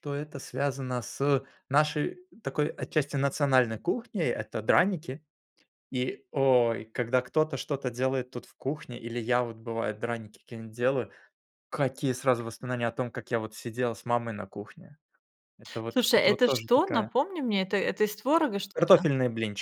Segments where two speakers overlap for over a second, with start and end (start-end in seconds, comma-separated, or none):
15.9-17.1